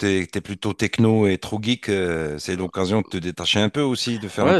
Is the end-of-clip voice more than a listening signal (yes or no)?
yes